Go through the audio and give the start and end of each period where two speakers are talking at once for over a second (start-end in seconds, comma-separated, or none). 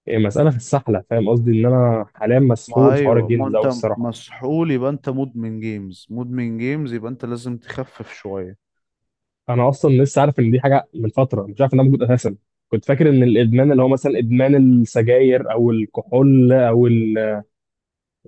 2.7-4.2